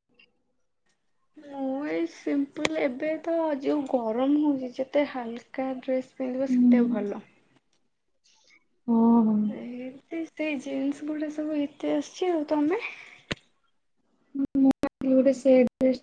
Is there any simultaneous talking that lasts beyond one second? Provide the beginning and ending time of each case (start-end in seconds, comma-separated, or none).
none